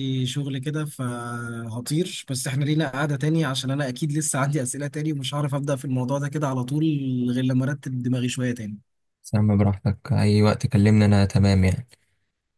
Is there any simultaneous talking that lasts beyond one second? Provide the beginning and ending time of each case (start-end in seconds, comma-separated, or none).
none